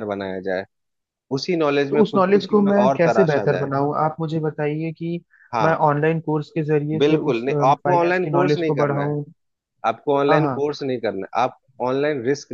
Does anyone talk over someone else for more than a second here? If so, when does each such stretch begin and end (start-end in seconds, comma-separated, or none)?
1.9-3.7, 7.0-9.1